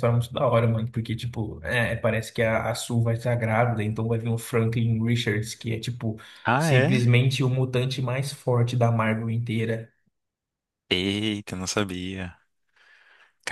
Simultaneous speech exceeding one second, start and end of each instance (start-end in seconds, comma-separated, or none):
none